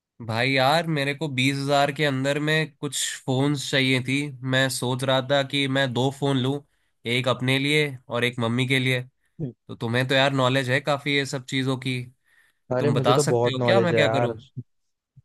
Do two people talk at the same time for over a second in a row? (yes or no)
yes